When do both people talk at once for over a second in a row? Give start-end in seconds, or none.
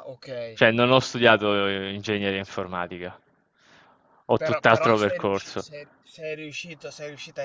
4.4-5.7